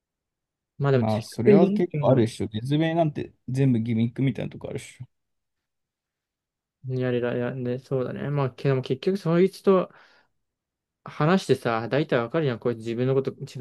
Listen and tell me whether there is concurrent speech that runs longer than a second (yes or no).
yes